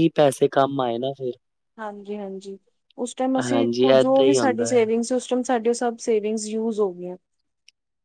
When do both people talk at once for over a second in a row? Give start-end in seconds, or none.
3.5-4.8